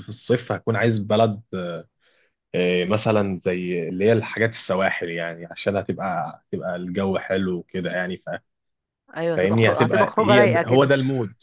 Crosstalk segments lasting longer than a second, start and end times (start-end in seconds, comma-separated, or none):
9.3-10.9